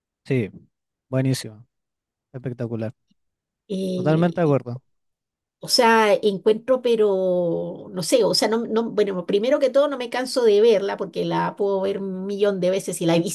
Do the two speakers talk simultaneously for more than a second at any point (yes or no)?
no